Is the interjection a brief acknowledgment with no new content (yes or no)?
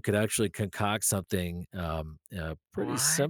yes